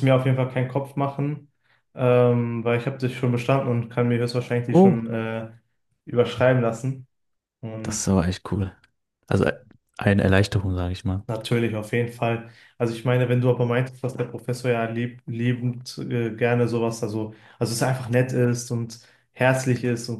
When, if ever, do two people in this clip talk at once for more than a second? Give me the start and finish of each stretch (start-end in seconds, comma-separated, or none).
none